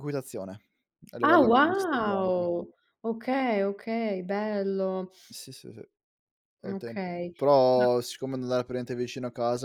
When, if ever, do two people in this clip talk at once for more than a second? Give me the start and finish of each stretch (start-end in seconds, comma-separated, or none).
1.2-2.5